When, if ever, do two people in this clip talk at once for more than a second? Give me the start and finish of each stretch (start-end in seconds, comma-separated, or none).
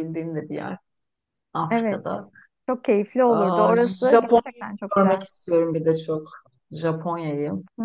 3.2-5.2